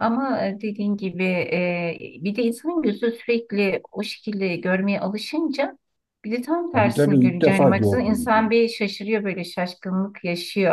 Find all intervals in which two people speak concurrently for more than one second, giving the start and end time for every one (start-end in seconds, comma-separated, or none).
6.7-8.5